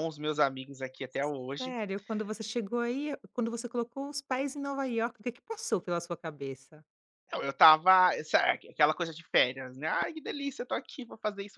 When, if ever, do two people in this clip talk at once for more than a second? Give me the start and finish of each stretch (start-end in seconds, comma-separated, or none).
none